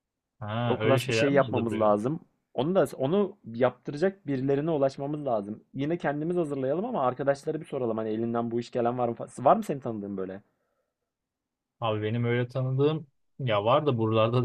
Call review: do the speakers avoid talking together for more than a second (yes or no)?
no